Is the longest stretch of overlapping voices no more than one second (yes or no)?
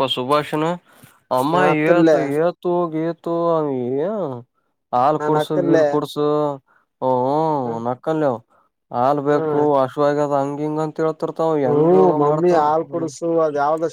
no